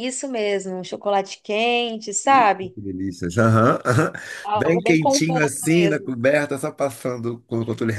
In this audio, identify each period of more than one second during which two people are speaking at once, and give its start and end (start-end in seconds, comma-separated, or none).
4.5-6.1